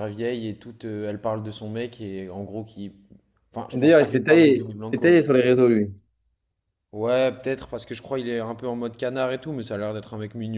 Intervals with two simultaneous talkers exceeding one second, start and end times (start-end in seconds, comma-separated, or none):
3.7-5.2